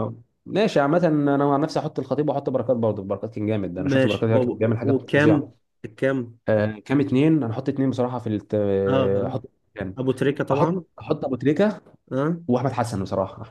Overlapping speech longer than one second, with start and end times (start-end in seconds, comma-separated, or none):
3.8-5.5